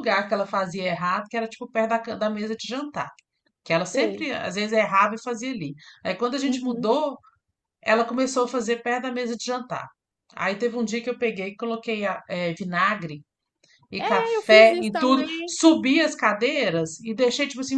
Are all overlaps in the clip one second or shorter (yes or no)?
no